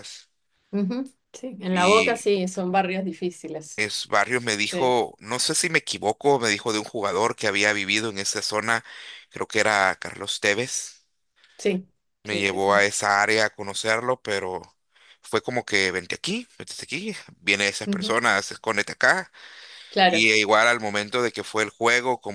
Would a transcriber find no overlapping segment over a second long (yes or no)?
yes